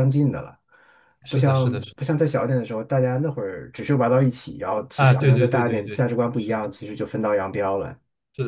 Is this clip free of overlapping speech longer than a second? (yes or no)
no